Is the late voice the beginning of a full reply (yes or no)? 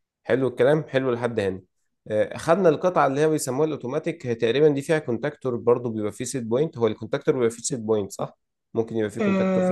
yes